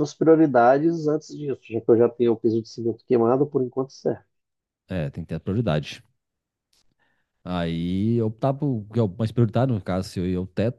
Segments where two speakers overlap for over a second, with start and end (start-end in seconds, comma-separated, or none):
none